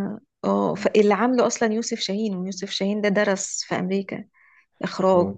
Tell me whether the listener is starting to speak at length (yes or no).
no